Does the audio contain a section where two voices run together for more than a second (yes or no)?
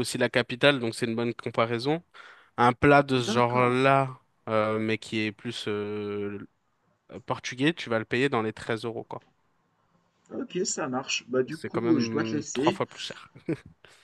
yes